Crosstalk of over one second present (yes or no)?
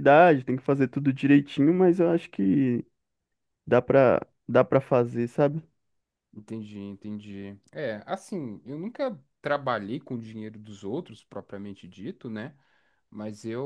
no